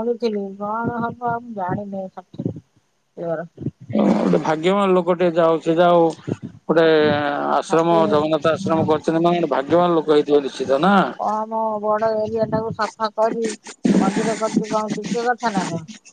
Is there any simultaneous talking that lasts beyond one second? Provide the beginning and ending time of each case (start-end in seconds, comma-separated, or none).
7.7-9.0